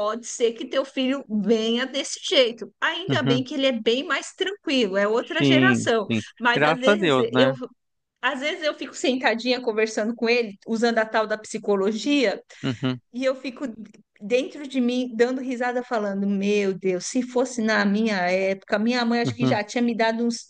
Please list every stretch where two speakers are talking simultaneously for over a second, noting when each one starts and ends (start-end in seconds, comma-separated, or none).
5.4-7.5